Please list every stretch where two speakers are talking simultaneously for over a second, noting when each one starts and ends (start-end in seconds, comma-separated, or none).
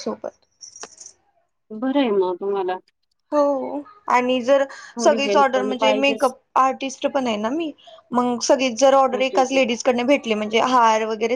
5.0-6.3